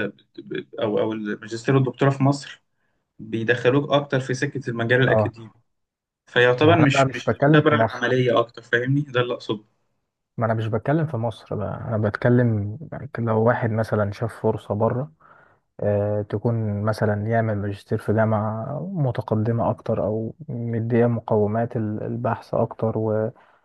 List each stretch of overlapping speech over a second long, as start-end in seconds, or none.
6.6-8.0